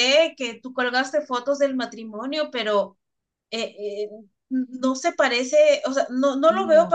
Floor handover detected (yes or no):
no